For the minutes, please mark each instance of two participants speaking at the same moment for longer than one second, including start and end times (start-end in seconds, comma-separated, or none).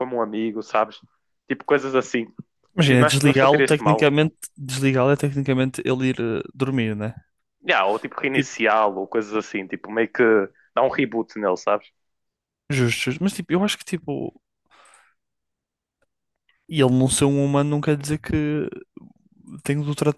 2.9-4.1